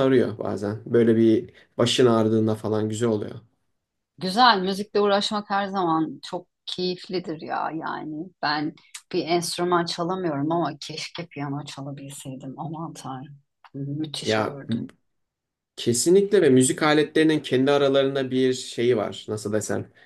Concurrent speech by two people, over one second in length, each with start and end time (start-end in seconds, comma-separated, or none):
none